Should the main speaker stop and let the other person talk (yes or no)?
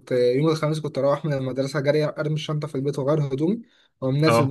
no